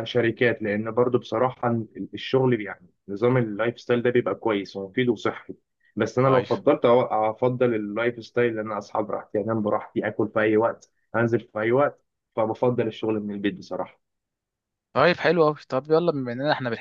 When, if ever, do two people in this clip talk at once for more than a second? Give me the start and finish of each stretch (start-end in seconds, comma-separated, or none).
none